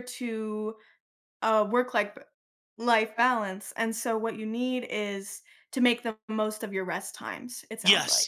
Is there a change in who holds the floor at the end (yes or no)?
yes